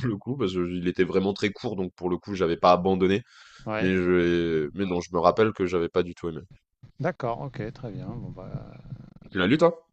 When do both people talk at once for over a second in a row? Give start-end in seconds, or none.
none